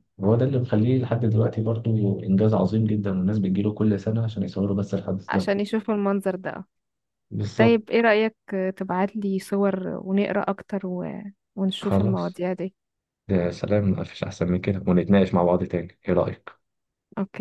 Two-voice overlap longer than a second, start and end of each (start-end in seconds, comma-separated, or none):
none